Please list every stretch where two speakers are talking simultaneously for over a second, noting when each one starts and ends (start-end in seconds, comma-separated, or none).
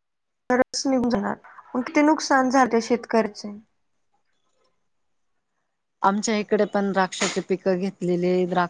none